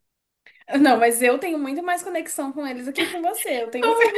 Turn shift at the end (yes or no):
yes